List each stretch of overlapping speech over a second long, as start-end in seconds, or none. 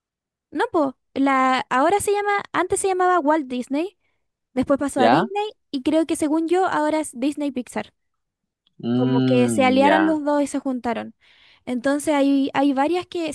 8.9-10.2